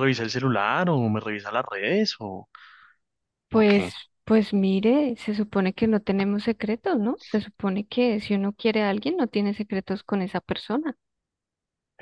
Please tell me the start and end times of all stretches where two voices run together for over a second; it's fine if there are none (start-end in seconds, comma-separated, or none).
none